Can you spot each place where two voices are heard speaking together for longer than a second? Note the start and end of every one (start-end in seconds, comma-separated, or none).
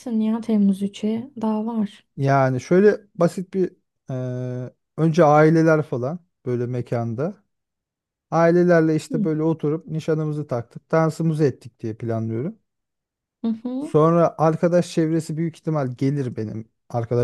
none